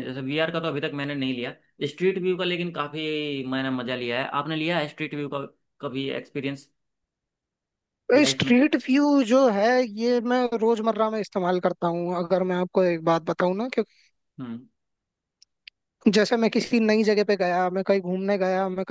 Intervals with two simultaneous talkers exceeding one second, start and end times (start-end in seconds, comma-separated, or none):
none